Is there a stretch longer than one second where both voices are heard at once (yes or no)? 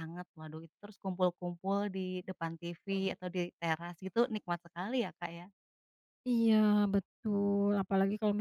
no